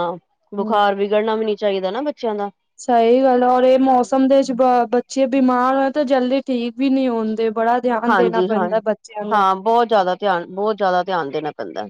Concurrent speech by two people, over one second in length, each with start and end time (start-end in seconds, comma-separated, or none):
8.1-9.4